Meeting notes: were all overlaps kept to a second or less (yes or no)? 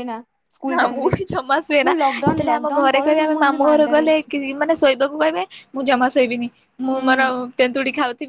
no